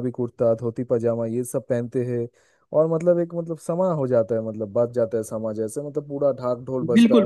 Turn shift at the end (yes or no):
yes